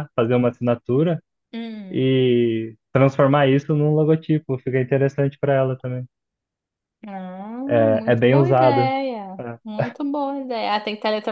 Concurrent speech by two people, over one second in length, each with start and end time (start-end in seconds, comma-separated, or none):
7.7-8.9